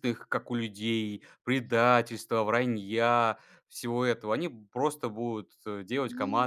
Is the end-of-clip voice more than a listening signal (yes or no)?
no